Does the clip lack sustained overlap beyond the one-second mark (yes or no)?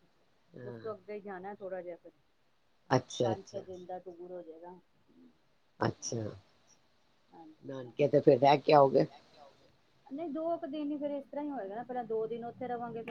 yes